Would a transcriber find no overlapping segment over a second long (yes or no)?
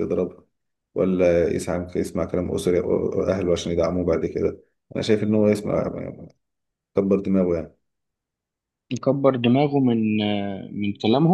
yes